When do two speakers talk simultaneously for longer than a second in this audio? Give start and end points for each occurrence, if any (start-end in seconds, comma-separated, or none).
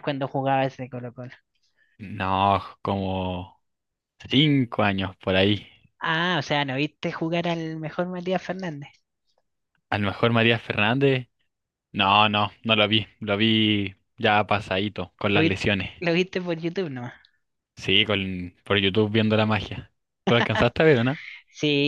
none